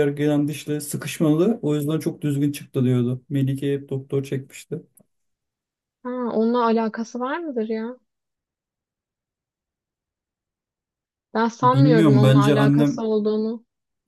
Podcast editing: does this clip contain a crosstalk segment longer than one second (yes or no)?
yes